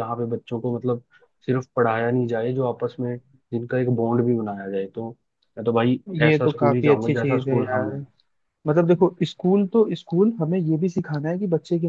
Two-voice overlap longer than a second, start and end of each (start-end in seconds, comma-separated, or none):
6.2-7.9